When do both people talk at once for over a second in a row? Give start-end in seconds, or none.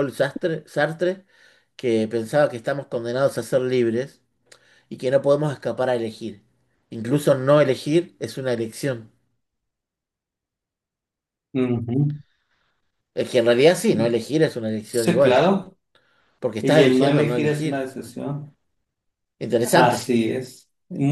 16.6-17.9